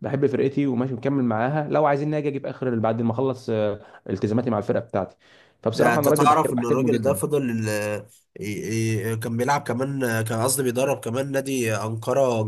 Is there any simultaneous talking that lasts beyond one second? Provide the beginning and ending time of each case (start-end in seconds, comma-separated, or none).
5.7-7.2